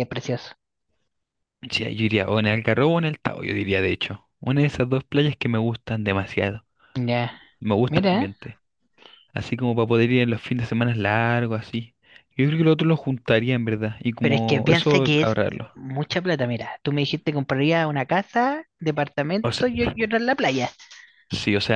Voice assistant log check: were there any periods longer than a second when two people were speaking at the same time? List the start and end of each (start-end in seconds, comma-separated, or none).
14.2-15.8